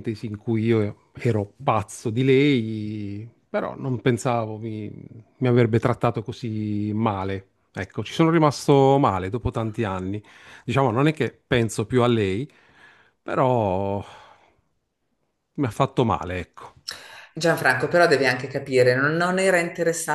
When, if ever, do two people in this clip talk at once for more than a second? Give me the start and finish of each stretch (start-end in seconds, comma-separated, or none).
none